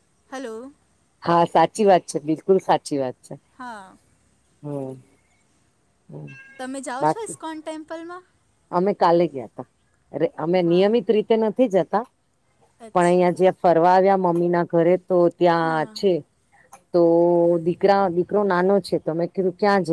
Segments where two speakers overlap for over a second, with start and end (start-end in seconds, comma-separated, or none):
none